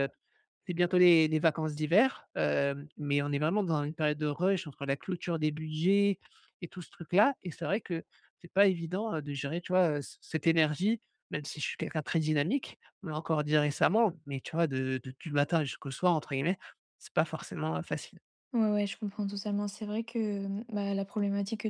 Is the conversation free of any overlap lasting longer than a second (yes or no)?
yes